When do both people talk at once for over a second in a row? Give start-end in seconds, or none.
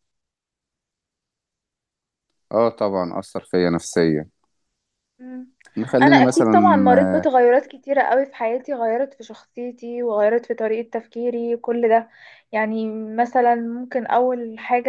none